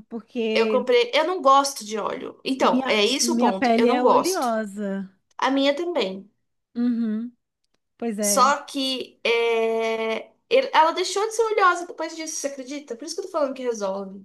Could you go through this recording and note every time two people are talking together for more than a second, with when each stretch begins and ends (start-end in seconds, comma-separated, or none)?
2.6-4.5